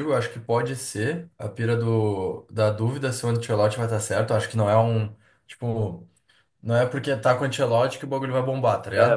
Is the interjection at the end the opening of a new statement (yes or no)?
no